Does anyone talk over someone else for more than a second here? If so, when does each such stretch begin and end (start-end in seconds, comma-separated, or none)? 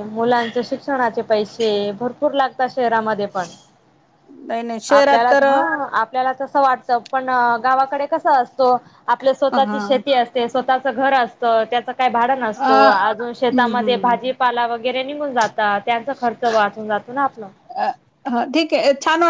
12.6-14.2